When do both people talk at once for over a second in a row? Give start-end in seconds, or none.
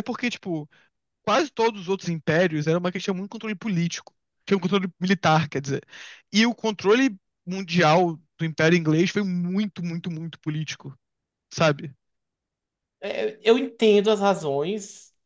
none